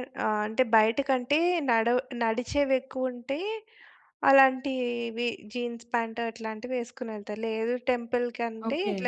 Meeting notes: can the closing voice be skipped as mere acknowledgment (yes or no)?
yes